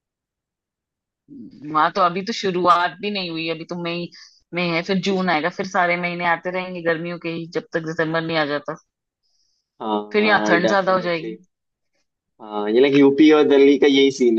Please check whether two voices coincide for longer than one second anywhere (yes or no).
yes